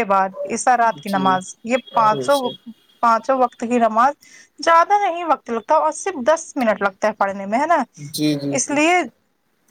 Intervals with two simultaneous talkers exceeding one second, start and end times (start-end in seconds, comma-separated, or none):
none